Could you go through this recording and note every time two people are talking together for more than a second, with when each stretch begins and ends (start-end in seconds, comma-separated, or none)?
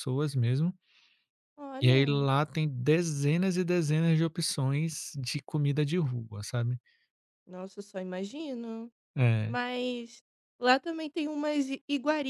none